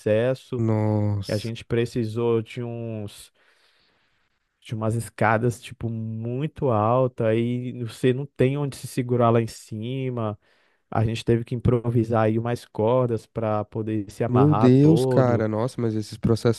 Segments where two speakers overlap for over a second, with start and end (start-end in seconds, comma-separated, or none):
14.3-15.5